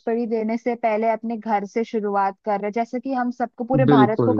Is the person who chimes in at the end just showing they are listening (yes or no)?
yes